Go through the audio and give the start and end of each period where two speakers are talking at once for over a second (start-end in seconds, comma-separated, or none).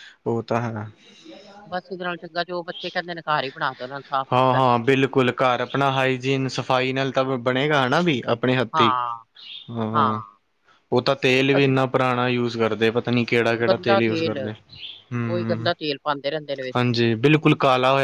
none